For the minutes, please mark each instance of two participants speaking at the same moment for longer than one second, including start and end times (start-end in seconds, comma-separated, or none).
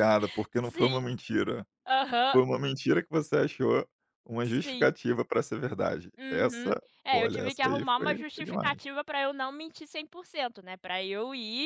6.2-8.8